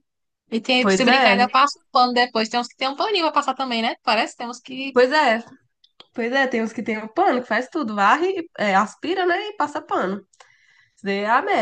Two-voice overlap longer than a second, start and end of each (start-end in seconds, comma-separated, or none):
none